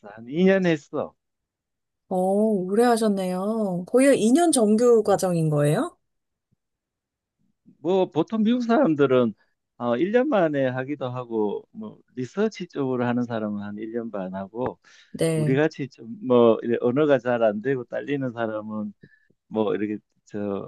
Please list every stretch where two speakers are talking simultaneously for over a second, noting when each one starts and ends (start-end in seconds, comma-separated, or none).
none